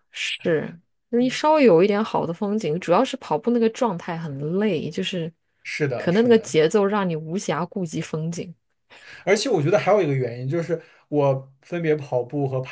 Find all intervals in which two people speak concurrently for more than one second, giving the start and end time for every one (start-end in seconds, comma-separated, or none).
none